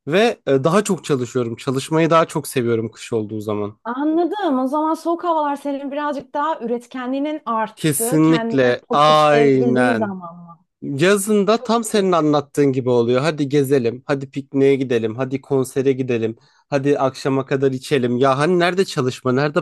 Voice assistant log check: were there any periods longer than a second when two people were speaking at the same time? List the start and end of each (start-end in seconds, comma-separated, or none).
7.7-10.1